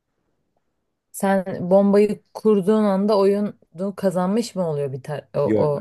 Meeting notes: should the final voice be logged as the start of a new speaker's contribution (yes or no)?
yes